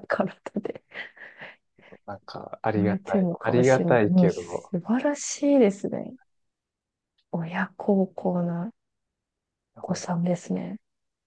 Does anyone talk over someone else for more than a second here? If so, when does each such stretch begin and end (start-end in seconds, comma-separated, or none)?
2.8-4.7